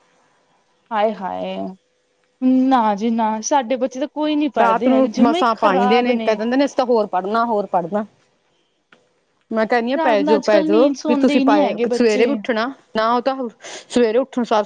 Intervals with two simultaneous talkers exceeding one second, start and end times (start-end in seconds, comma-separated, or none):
4.6-6.1, 10.0-12.3